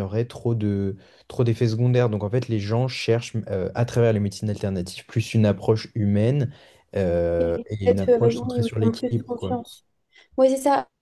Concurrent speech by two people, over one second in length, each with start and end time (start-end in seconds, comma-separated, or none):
7.4-9.5